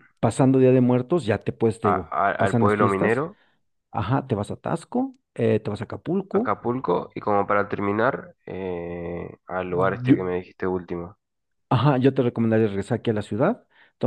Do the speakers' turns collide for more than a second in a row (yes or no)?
yes